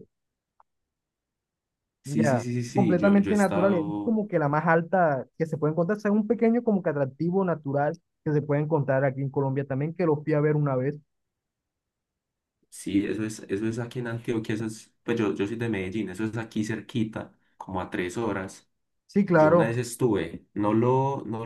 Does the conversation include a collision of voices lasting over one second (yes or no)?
yes